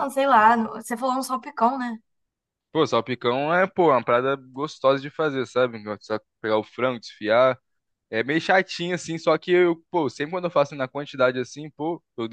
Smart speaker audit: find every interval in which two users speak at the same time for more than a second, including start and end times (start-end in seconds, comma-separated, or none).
none